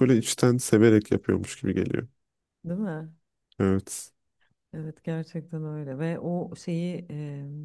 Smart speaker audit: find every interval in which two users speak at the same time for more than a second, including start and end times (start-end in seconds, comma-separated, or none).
none